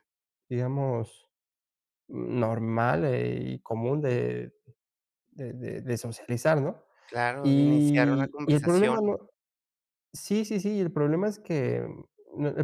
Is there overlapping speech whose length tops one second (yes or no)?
yes